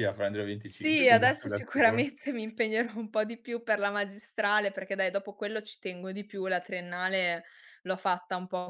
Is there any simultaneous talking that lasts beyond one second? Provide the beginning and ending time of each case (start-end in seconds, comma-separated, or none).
0.6-2.1